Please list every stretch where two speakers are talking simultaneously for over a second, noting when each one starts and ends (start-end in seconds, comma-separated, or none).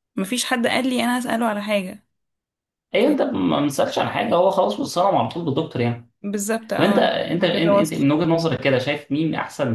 6.8-8.1